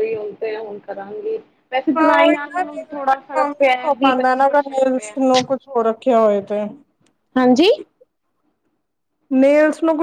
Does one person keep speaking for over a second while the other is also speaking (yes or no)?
yes